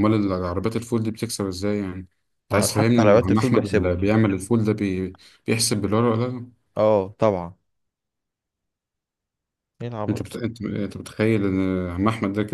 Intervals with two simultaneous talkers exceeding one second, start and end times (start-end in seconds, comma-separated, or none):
2.5-3.9